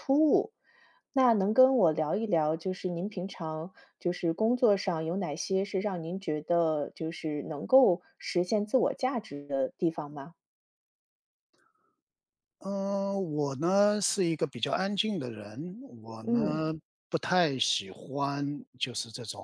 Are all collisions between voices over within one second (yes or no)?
yes